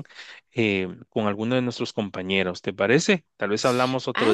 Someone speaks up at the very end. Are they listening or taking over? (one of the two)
taking over